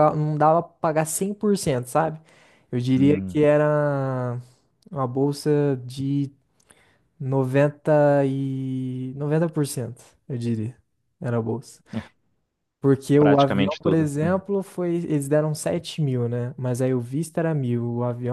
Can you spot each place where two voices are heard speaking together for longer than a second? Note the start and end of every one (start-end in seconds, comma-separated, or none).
13.2-14.4